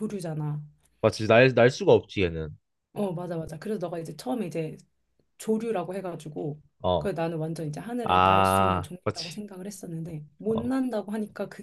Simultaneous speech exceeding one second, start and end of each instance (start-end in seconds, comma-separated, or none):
8.0-9.4